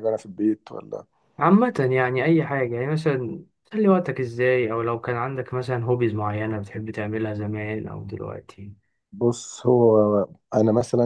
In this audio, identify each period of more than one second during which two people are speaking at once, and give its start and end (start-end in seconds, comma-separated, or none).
none